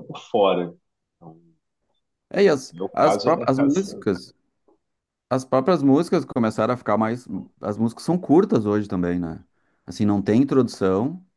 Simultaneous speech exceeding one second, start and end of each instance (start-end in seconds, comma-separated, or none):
2.7-4.1